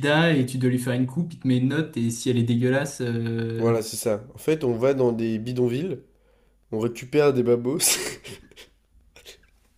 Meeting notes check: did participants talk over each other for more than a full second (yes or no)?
no